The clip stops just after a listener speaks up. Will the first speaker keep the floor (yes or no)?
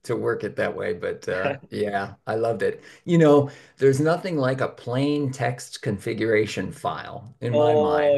no